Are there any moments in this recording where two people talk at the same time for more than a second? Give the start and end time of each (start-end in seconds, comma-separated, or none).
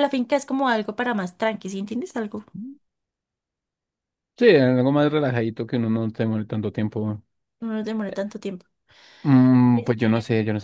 none